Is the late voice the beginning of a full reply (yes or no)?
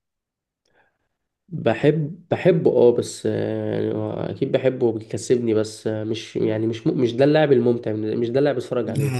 yes